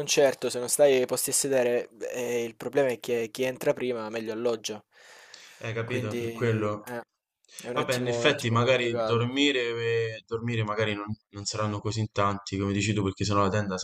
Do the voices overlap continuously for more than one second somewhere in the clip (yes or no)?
yes